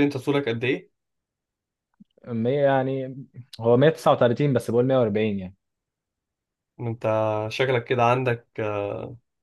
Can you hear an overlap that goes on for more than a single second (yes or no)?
no